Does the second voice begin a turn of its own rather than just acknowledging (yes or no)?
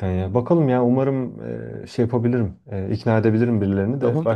yes